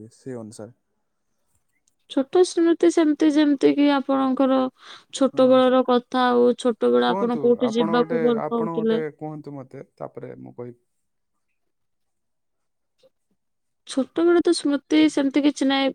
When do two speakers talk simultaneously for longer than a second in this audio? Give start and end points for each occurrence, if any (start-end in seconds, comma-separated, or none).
7.0-9.0